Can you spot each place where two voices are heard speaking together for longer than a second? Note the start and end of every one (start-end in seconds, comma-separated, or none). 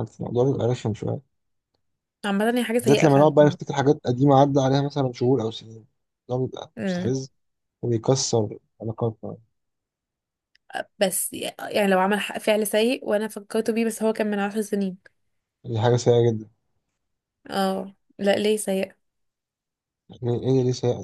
none